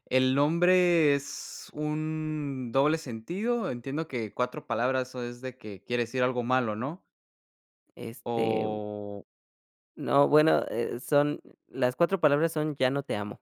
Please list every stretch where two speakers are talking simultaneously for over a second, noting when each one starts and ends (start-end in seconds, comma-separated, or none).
none